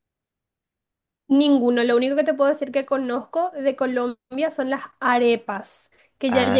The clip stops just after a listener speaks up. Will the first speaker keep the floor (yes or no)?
yes